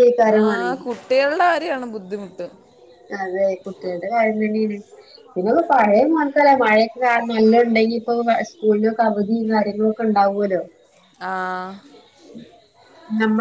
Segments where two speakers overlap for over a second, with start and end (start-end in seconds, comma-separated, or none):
none